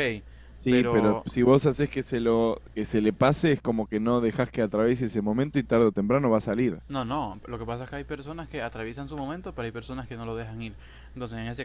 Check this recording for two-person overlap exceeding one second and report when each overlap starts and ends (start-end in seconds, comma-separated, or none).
none